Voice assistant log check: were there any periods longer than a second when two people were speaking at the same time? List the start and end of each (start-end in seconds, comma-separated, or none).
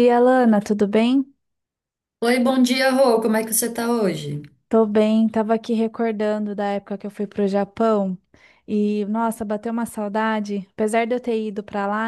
none